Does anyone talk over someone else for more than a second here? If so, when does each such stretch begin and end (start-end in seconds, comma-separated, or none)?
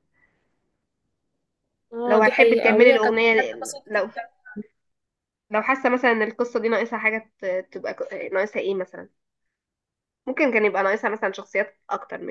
2.0-4.1